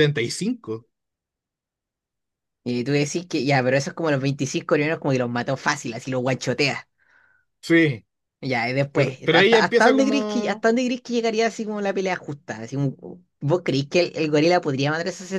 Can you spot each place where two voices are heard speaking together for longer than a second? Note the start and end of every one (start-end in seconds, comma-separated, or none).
8.9-10.7